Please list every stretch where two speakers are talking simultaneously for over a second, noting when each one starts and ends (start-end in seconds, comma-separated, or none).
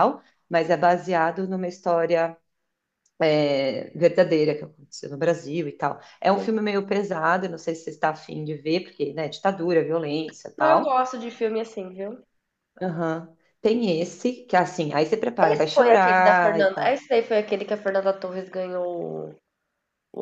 15.4-17.0